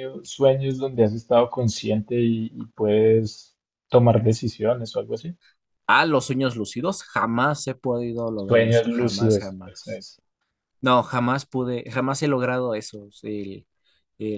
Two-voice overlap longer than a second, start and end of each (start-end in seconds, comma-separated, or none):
8.3-10.0